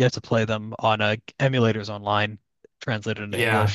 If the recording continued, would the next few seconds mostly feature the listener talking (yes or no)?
yes